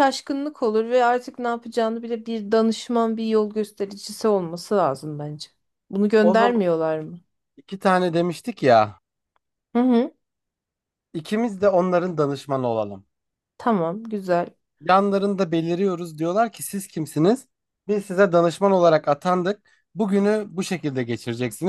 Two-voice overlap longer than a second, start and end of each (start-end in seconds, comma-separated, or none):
none